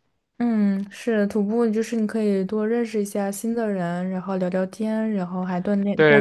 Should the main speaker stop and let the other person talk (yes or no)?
yes